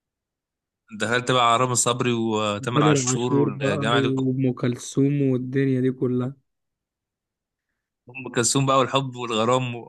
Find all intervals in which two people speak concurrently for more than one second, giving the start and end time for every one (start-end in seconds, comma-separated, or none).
2.7-4.1